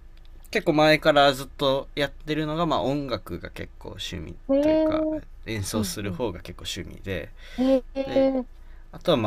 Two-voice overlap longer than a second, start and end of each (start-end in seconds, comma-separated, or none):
none